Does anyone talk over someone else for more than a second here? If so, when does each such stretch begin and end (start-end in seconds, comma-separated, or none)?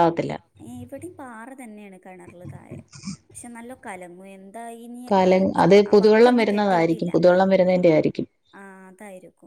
5.1-7.1